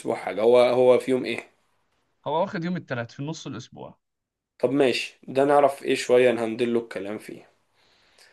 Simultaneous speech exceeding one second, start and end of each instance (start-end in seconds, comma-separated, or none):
none